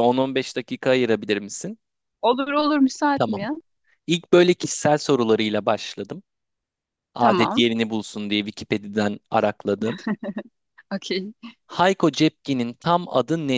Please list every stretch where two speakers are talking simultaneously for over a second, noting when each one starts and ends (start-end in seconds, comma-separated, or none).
none